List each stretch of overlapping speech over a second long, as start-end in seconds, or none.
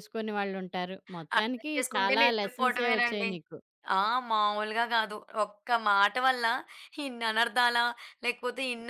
1.4-3.3